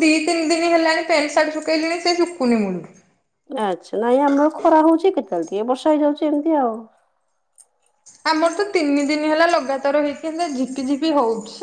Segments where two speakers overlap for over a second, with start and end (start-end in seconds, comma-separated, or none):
none